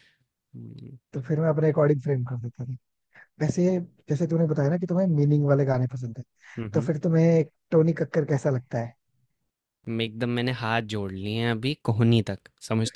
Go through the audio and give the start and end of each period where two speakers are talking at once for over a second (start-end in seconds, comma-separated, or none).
none